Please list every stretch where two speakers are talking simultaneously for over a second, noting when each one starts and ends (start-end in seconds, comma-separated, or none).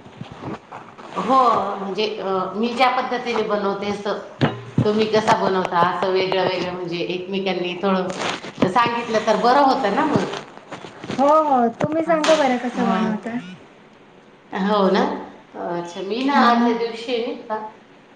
12.1-13.3